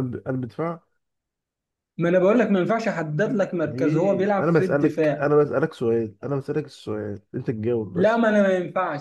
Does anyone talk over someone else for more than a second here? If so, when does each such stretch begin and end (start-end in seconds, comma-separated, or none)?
3.6-5.3